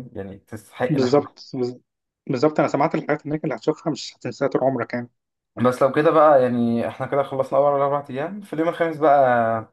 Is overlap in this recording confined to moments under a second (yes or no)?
yes